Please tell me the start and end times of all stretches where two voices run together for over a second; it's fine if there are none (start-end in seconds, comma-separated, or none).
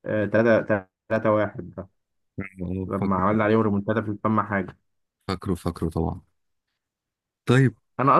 none